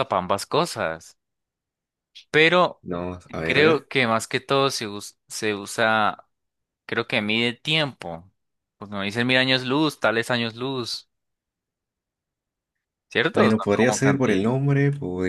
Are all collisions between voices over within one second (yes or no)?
no